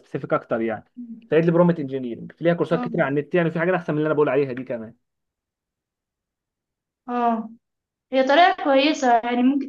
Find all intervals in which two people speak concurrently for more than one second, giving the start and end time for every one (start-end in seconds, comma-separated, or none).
none